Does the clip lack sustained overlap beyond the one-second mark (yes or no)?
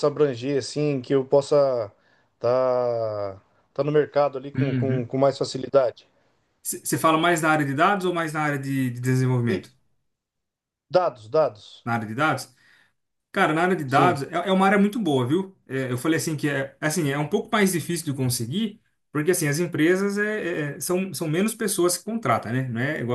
yes